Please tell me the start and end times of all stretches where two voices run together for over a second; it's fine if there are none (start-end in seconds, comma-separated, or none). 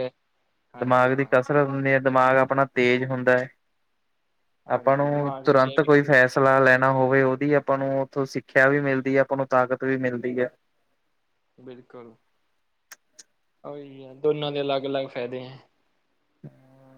4.7-6.7